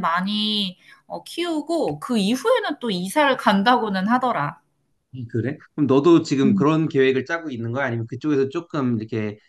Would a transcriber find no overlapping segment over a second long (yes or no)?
yes